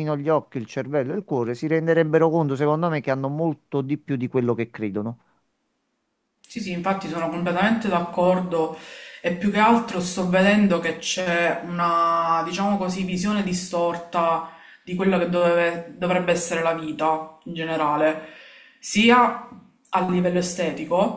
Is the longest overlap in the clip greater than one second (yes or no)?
no